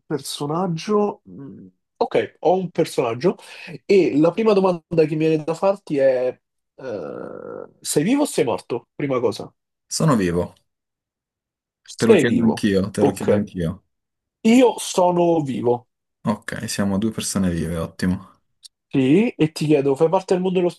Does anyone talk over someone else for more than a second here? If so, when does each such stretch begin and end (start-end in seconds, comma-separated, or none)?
12.1-13.5